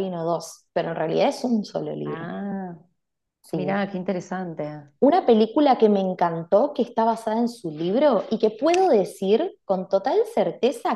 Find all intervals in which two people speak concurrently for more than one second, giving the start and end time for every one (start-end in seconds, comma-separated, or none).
none